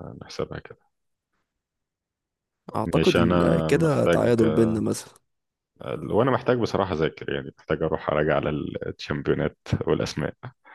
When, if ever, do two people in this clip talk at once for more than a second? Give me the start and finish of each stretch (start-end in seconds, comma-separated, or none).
2.8-4.3